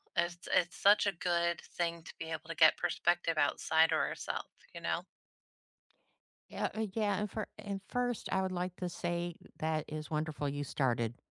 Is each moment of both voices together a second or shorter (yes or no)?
yes